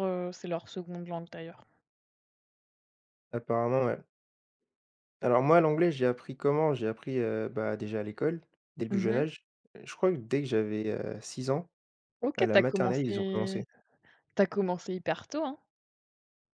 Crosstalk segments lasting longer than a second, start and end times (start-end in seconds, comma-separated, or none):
12.4-13.6